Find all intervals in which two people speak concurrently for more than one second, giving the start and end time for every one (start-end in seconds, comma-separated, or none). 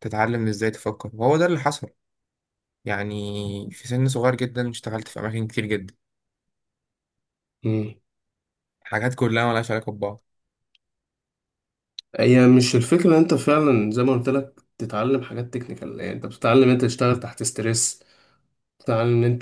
none